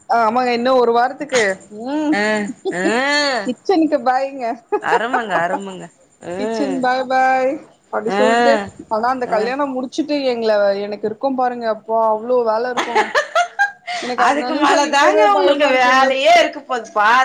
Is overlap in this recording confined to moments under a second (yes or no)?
no